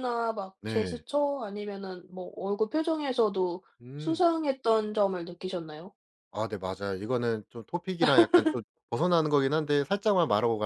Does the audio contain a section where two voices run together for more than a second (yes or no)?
no